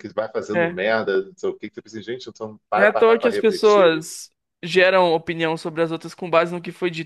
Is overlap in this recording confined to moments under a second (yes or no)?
no